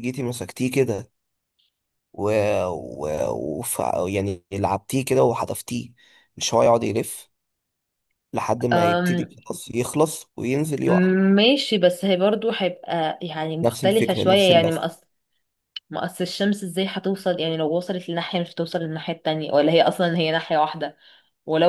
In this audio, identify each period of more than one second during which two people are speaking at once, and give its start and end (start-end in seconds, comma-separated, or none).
13.6-14.8